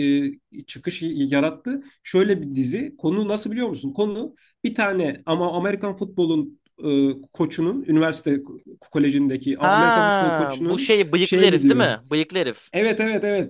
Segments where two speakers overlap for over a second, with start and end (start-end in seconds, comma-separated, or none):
9.6-12.0